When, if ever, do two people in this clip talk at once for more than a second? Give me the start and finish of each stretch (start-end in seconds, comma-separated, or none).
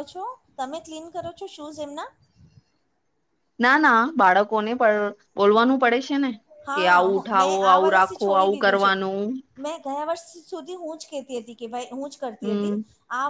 6.7-8.9